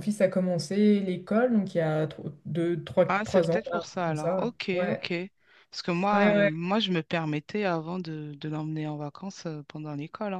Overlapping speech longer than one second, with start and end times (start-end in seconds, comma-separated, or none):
3.1-5.0